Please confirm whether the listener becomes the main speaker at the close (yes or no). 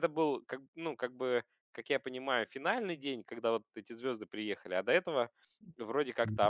yes